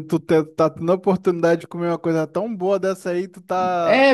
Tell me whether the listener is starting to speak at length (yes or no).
yes